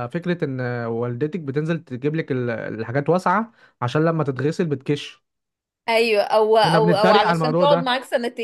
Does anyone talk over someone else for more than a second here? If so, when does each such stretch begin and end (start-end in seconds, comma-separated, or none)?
6.6-7.9